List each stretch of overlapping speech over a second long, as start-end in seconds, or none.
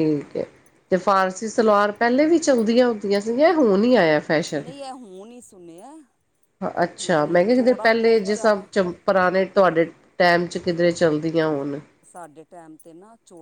7.0-8.9